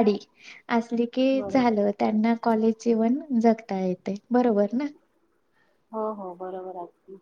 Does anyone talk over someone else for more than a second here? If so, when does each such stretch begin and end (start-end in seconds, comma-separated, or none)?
none